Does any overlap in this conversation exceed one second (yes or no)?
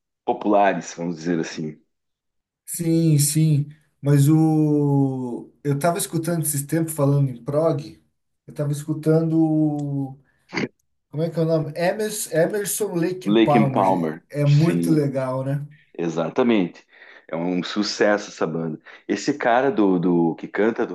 yes